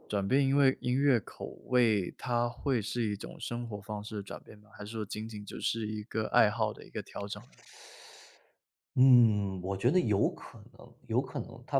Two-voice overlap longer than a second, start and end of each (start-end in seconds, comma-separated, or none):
none